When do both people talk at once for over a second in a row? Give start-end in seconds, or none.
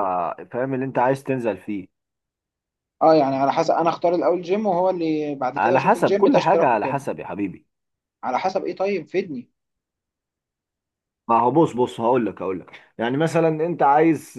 5.5-7.0